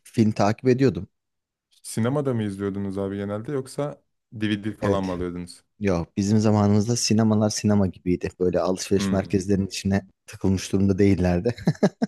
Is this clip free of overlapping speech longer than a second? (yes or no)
yes